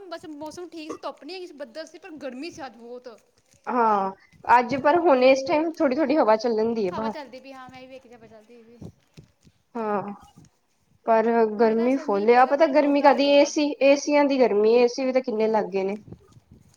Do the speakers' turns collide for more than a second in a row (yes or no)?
yes